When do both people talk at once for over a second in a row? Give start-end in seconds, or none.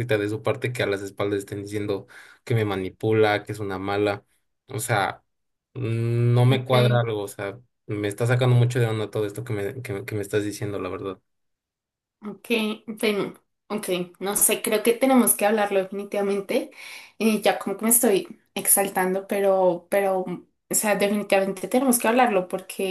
none